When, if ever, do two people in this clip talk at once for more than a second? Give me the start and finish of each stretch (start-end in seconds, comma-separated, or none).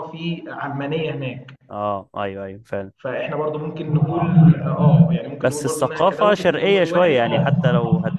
5.4-7.5